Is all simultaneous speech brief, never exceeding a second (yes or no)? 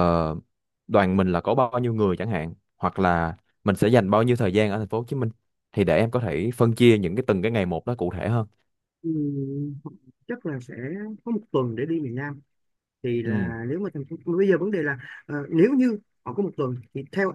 yes